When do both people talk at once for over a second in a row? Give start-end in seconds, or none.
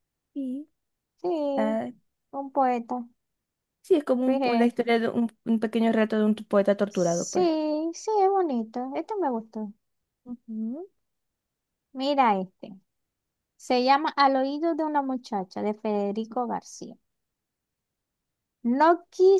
none